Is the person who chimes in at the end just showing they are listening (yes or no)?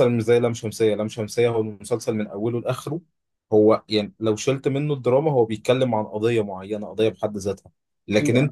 yes